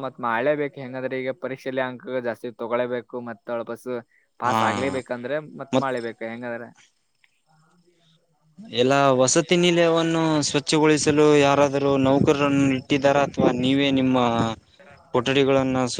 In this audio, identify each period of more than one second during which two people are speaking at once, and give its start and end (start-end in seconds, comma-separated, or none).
10.3-13.4